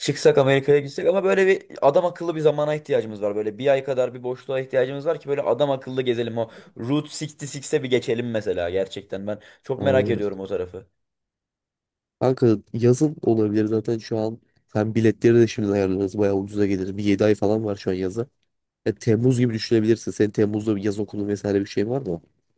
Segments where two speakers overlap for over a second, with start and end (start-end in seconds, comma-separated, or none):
none